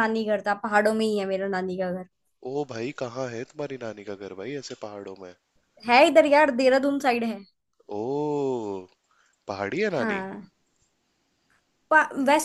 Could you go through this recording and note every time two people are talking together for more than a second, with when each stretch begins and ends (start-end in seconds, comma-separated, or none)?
none